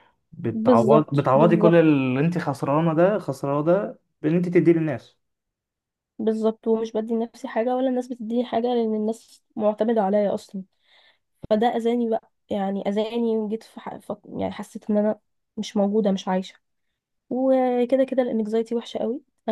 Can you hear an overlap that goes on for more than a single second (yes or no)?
yes